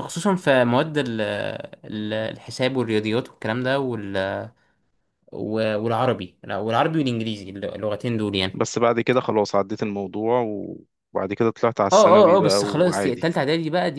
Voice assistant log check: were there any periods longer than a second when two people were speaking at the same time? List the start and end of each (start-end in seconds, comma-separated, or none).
11.9-13.3